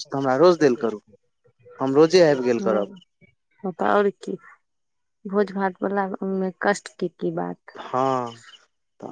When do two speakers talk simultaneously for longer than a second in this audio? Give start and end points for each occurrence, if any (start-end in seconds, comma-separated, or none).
none